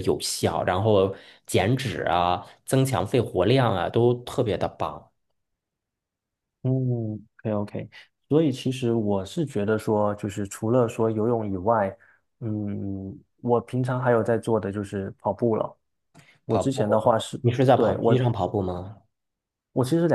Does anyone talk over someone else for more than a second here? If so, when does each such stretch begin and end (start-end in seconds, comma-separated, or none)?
16.5-18.3